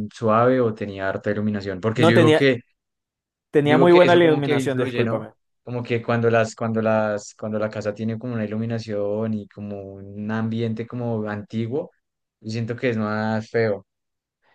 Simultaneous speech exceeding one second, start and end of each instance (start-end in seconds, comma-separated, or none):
3.6-5.3